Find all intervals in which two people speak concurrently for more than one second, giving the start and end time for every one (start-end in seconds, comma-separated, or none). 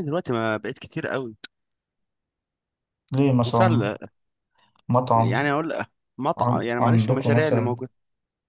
6.4-7.8